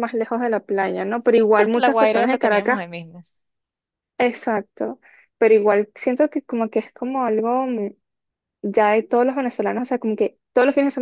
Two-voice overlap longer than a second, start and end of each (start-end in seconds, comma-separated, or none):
1.6-2.8